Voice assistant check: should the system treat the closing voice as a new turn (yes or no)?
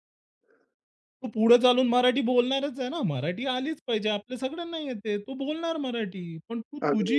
no